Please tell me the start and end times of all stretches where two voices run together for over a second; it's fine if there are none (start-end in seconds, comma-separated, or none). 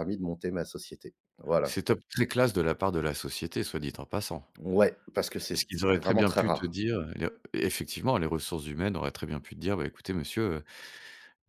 5.5-6.8